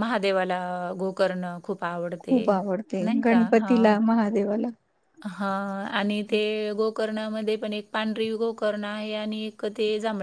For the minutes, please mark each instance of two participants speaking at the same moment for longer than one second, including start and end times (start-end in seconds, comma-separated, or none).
none